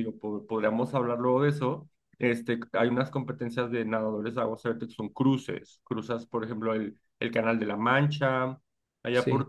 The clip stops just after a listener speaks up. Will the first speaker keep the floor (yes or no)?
yes